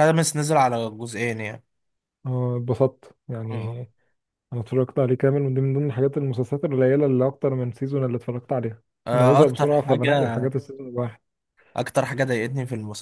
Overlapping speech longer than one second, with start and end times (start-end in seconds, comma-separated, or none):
9.1-10.5